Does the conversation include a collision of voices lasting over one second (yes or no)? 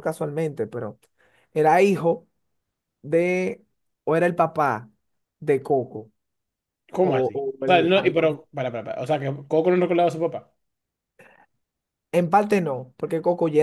yes